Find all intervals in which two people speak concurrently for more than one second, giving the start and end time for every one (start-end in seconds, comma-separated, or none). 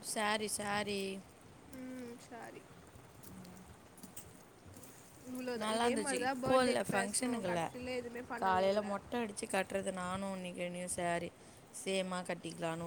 5.6-7.6